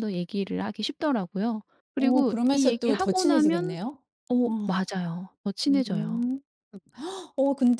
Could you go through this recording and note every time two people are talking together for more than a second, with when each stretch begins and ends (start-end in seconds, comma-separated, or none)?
1.9-3.8